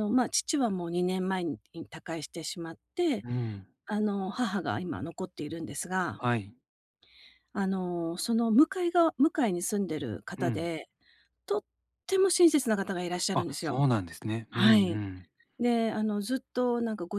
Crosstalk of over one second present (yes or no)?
no